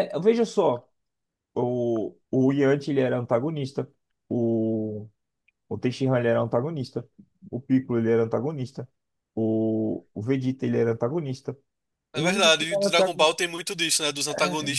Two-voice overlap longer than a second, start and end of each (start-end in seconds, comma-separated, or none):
12.1-13.4